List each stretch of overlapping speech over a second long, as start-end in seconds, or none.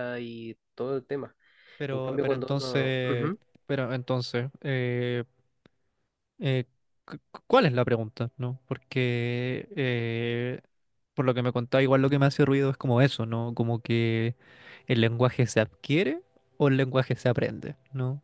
1.9-3.4